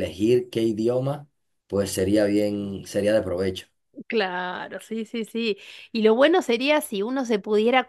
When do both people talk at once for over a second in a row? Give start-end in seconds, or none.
none